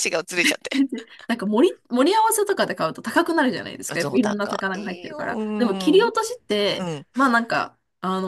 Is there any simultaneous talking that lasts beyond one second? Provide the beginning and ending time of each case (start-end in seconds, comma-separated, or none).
3.9-6.0